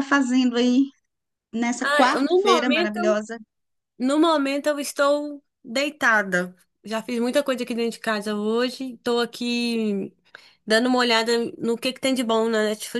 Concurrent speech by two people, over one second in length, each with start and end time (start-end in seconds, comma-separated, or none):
1.8-3.2